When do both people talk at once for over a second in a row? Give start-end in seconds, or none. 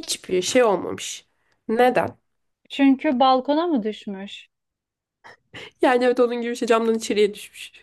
none